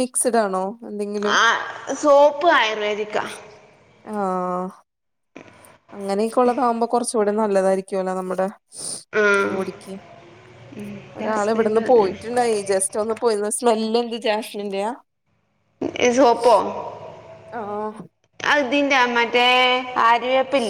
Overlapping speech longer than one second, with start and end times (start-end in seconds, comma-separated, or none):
11.2-12.4